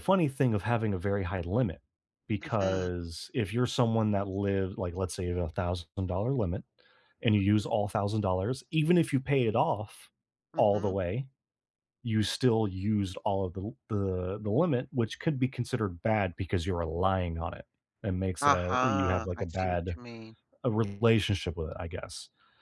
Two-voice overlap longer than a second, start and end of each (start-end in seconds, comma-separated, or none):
18.4-20.0